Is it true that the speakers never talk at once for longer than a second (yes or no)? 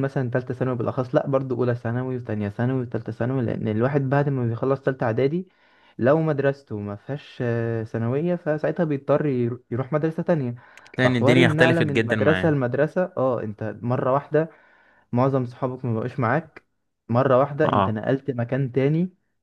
no